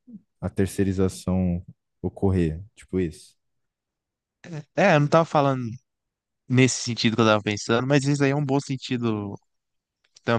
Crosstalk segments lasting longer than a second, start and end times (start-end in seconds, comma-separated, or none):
none